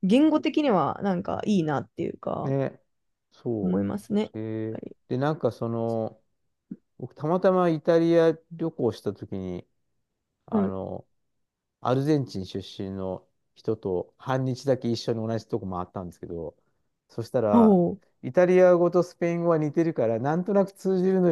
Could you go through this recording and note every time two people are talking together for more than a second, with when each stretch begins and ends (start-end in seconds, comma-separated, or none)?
none